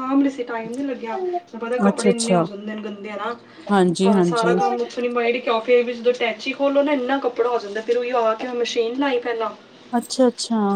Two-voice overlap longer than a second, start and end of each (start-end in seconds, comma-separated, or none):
none